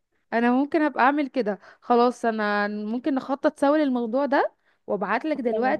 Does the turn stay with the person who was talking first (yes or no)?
yes